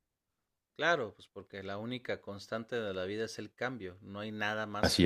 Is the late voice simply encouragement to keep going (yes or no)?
yes